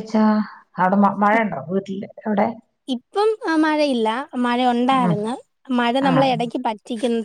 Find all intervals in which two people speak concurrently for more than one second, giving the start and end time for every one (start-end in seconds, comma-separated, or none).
none